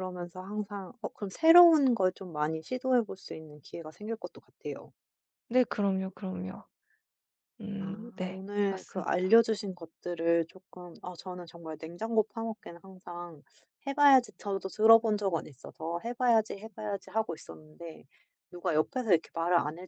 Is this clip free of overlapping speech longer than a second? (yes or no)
no